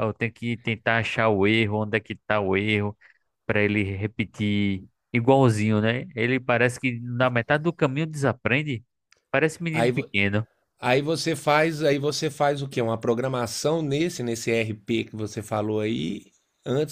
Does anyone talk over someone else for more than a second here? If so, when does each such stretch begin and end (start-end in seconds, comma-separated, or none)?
none